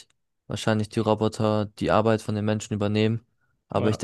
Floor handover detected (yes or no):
no